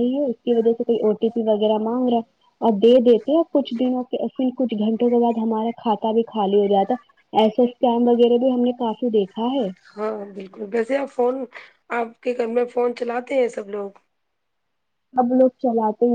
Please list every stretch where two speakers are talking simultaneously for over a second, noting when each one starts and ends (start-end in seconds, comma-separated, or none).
none